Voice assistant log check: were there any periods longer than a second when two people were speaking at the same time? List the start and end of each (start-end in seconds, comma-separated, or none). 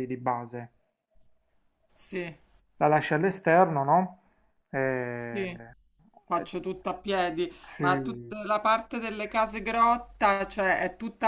none